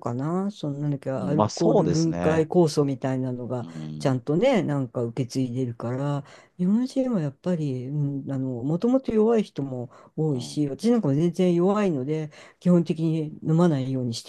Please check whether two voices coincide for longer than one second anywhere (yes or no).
yes